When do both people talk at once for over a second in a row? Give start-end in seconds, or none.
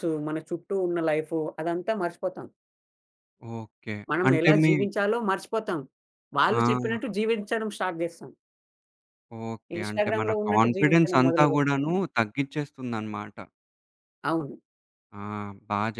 9.8-12.0